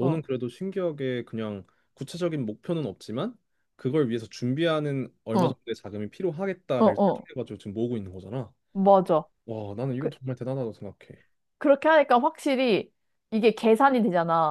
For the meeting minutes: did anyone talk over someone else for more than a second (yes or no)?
no